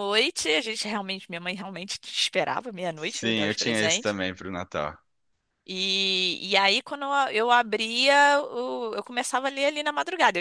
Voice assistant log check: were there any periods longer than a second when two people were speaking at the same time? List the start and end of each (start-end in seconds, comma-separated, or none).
2.9-4.1